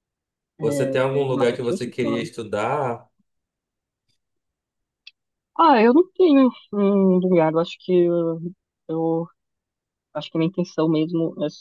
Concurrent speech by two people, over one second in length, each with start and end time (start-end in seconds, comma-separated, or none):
0.6-2.3